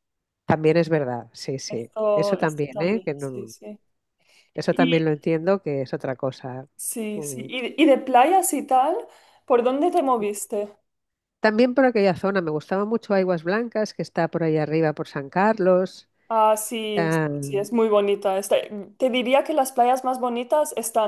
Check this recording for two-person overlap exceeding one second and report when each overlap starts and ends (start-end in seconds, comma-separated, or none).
1.7-3.5